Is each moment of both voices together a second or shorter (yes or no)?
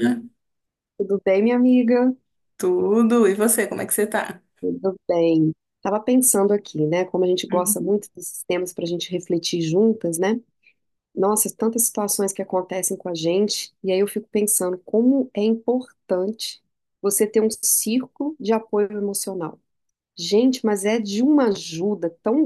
yes